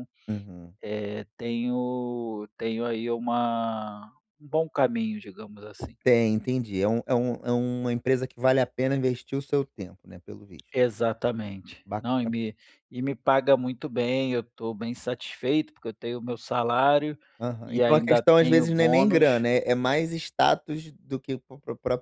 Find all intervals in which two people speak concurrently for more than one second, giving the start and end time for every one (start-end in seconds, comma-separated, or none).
17.6-19.5